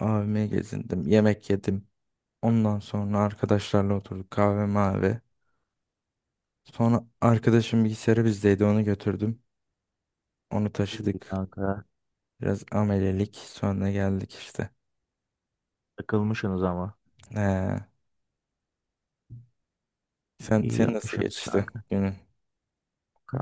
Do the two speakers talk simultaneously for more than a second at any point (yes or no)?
yes